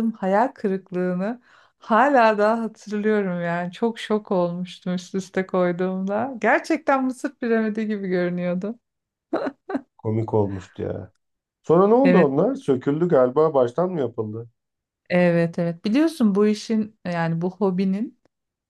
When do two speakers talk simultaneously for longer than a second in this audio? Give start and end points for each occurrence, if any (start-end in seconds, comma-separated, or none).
none